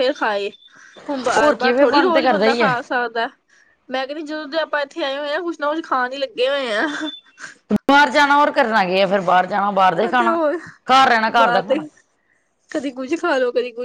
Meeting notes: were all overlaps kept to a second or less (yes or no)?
no